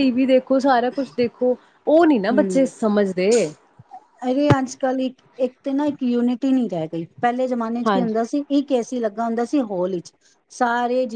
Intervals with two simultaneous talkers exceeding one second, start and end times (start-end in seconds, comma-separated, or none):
none